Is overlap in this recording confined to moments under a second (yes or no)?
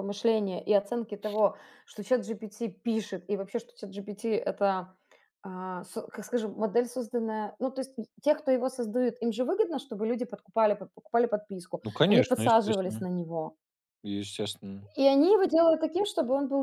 no